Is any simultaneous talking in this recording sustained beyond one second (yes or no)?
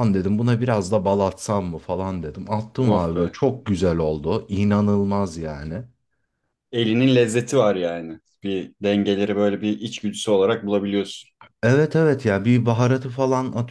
no